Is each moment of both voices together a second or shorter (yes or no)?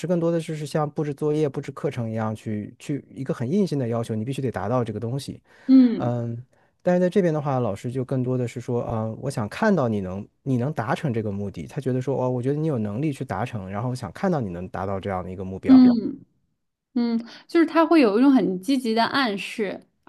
yes